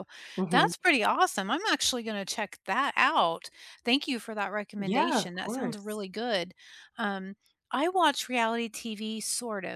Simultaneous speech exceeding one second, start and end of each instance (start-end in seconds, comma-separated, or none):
4.8-6.0